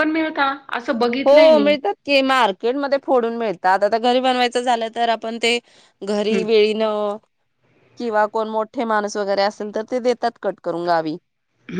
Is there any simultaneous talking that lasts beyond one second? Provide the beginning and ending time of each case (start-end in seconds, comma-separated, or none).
none